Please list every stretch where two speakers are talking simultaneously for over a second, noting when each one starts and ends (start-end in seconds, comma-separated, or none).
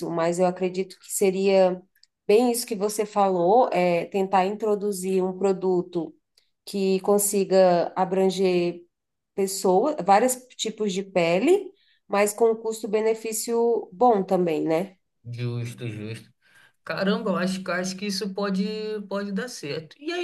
none